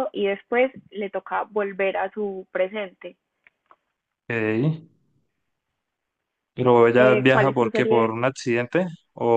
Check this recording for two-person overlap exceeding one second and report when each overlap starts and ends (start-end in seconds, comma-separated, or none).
6.9-8.2